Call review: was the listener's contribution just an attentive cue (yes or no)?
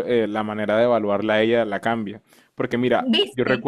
yes